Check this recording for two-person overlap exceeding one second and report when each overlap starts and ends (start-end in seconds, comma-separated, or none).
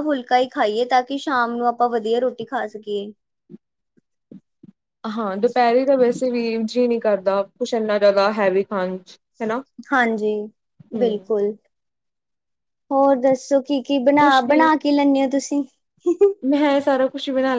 none